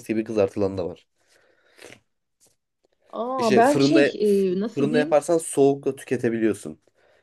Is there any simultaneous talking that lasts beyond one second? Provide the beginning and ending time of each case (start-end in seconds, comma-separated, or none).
3.4-5.2